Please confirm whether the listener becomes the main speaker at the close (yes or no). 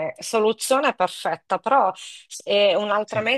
no